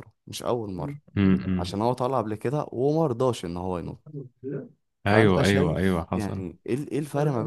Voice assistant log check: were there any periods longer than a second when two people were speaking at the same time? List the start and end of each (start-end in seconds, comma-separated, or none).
5.1-6.4